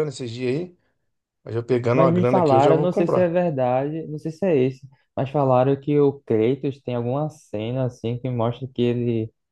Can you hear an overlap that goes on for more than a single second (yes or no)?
yes